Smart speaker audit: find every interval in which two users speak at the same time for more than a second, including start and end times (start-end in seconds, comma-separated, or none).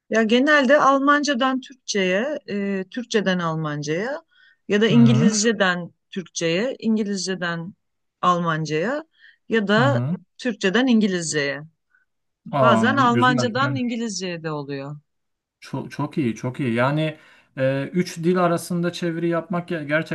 12.6-13.8